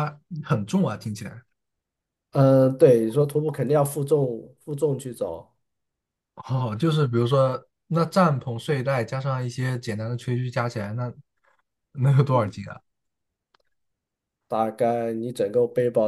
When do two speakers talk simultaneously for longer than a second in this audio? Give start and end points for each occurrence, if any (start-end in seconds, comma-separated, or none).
none